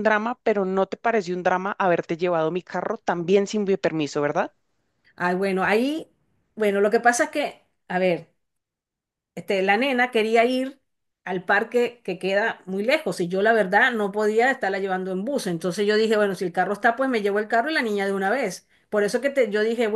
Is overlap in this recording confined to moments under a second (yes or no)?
yes